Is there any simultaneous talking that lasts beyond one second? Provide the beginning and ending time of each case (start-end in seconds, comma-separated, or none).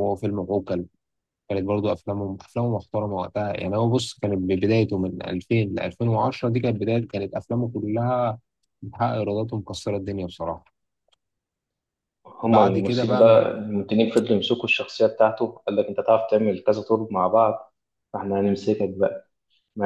12.4-13.6